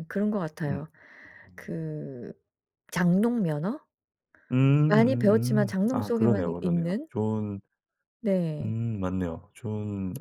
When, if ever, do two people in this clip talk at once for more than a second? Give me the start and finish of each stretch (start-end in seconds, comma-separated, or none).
4.9-7.1